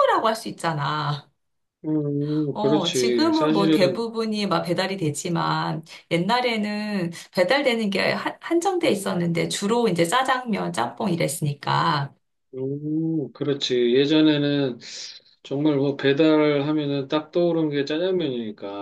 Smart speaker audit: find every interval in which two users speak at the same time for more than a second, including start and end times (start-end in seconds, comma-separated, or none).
2.5-4.0